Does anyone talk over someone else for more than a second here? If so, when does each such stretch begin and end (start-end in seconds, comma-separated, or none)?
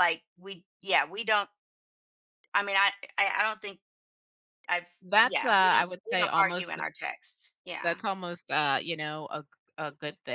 5.2-6.7